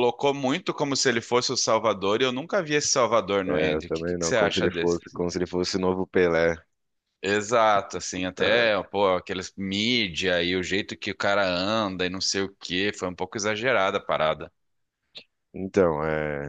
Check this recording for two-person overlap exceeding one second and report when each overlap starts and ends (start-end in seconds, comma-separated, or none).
3.5-5.0